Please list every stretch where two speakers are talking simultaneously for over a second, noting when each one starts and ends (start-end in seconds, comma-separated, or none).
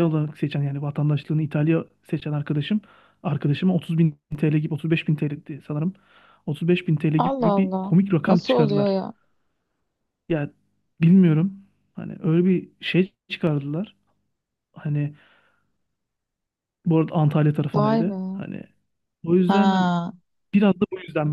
7.2-8.9